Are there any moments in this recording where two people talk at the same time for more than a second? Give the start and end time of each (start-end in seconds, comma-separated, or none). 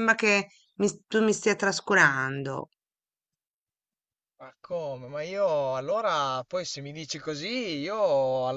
none